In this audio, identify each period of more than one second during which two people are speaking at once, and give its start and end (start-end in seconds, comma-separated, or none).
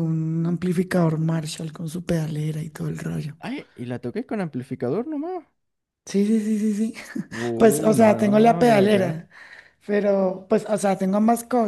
7.6-9.3